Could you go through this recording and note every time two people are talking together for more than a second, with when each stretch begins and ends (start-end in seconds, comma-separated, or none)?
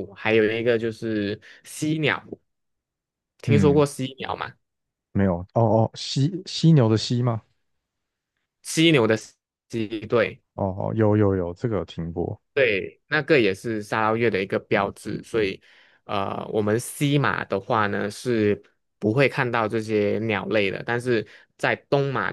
none